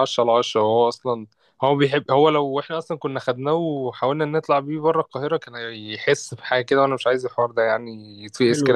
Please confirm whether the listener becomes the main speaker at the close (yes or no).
yes